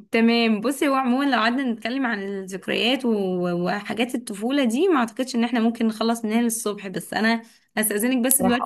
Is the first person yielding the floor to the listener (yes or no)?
no